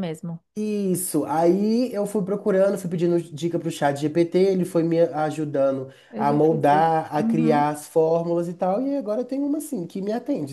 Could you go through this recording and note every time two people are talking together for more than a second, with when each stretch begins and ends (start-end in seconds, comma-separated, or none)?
6.1-7.7